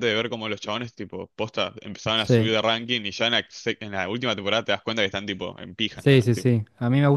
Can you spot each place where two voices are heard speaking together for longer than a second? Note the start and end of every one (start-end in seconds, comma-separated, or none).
none